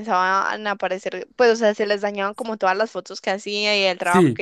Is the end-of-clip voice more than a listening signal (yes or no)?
yes